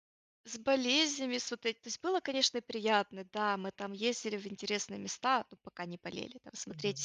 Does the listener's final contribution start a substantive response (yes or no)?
no